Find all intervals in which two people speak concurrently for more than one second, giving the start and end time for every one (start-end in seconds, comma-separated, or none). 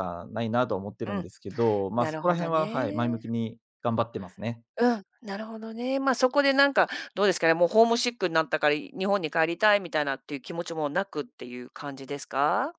1.9-3.2